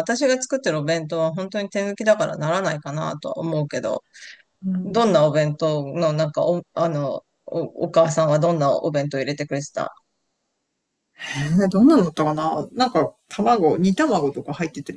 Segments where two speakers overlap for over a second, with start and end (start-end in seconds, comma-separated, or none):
none